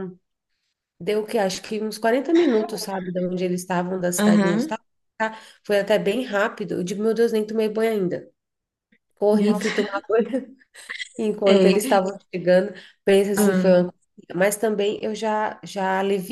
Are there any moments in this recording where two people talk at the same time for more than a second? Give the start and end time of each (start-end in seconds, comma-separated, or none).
none